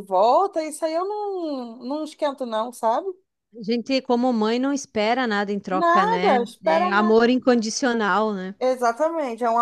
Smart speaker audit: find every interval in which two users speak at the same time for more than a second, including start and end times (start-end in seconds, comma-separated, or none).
5.7-7.2